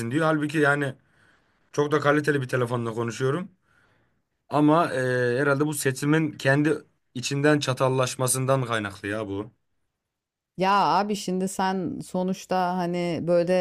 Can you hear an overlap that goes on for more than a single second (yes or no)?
no